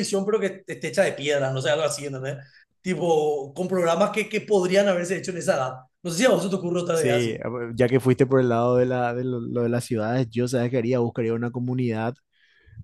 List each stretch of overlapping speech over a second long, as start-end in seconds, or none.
none